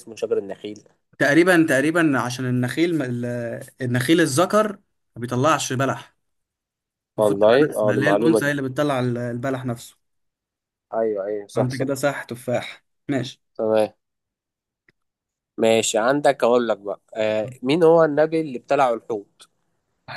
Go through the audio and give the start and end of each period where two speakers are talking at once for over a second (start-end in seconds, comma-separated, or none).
7.2-8.5